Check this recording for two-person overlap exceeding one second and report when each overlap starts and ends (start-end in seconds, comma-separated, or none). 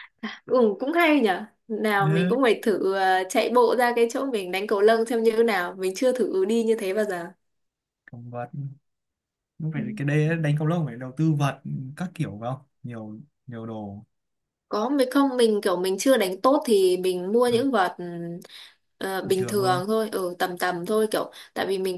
none